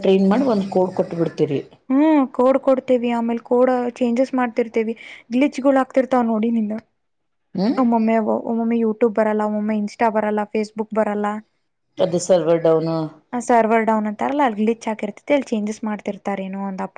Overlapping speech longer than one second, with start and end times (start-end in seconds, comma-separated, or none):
none